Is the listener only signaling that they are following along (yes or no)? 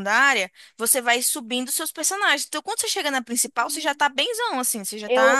no